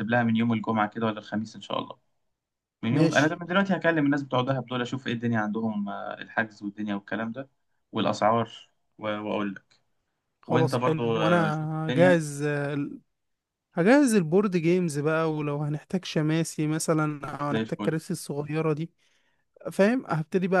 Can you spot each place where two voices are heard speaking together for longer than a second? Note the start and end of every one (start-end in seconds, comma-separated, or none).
10.5-12.2